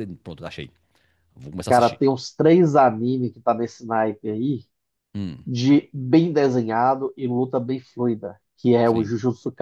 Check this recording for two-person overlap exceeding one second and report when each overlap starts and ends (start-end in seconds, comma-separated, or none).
none